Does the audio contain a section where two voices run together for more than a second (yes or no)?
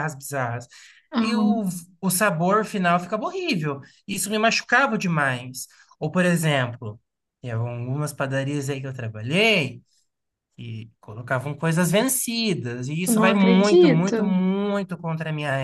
yes